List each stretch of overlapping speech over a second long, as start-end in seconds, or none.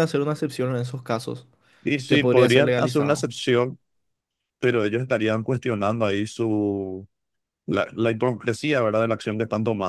2.1-3.3